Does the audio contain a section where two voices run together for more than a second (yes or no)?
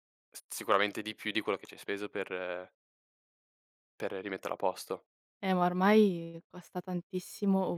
no